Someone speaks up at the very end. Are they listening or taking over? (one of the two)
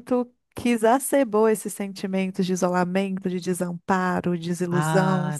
taking over